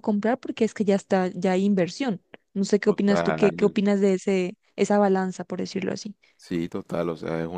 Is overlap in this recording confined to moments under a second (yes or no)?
yes